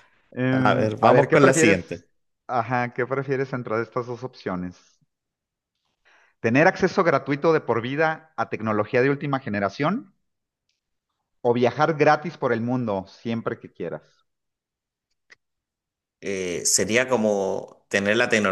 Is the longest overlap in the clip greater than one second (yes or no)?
yes